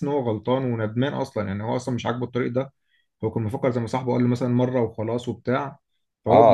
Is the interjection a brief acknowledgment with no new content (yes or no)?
no